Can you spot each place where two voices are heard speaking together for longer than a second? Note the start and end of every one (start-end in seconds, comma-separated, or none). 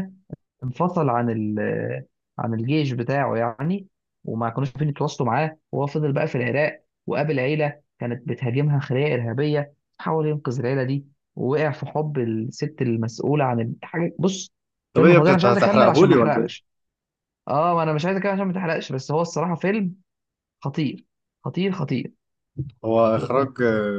14.9-16.6